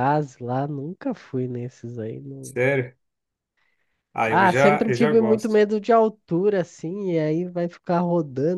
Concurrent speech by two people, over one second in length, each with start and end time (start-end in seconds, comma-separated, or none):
4.2-5.6